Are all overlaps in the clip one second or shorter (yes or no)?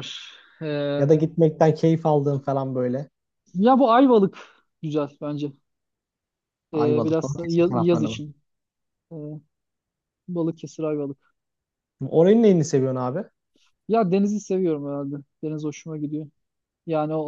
no